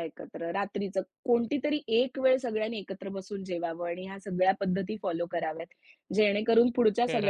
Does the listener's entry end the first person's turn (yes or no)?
no